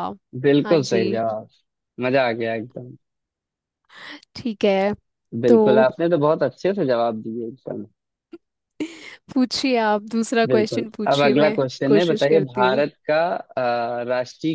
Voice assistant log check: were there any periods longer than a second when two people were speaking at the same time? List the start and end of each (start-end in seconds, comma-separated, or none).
10.5-12.8